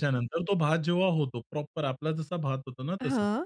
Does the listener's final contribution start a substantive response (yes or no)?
no